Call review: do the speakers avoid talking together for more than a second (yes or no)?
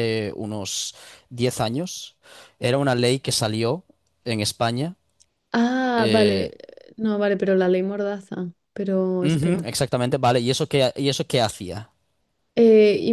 yes